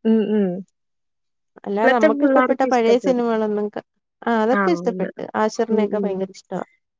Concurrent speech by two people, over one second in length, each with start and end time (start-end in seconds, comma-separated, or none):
1.7-3.3